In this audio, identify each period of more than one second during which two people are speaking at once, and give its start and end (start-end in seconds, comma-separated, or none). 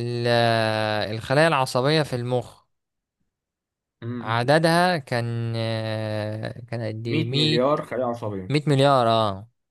none